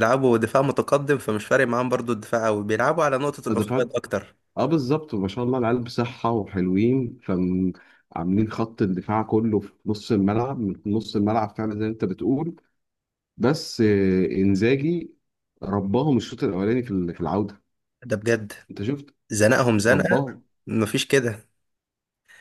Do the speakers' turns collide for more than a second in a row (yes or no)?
no